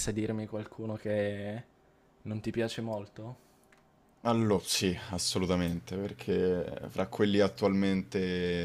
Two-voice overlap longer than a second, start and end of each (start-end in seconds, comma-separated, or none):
none